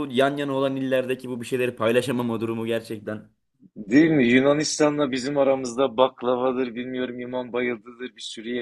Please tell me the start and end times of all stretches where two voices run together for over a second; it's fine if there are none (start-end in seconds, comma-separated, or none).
none